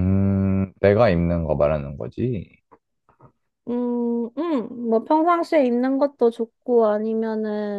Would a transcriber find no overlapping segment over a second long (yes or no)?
yes